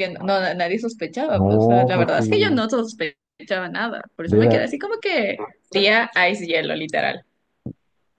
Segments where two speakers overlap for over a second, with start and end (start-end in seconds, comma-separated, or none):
1.3-2.6